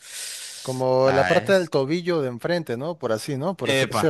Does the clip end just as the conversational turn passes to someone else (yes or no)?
yes